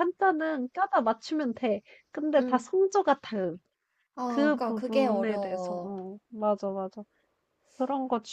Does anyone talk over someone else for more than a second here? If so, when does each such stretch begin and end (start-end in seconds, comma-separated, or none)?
4.3-6.0